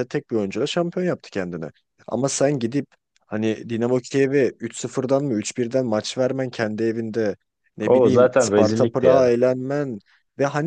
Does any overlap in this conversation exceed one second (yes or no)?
yes